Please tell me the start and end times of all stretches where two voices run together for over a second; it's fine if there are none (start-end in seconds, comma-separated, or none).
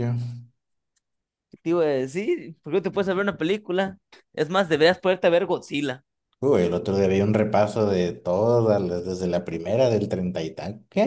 none